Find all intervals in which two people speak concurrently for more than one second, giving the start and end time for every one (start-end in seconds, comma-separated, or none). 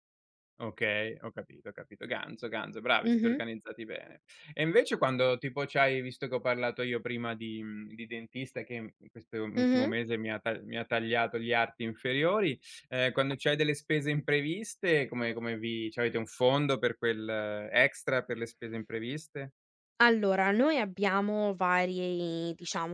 none